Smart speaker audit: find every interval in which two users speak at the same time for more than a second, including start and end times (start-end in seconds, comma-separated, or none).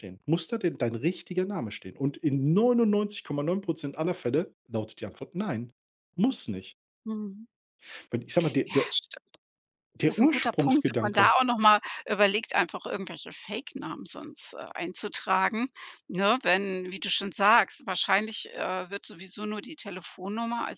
10.0-11.4